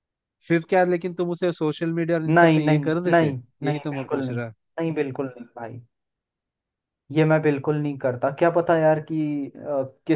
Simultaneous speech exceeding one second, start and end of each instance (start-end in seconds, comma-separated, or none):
2.3-4.4